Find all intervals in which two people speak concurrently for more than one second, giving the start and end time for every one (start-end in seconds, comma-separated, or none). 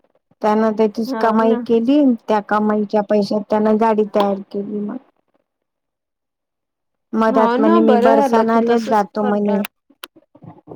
7.3-9.5